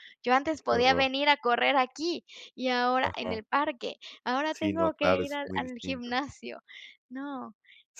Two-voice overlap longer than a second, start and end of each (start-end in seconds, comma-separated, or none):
4.5-6.2